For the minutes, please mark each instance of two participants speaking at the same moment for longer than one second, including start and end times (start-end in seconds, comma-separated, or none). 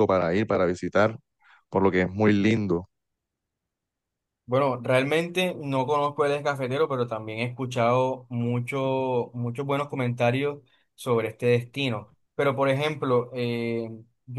none